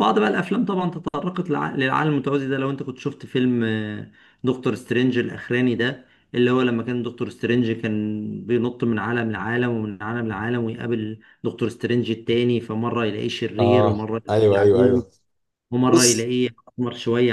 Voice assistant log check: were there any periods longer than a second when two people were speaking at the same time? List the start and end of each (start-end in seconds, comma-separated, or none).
13.6-15.0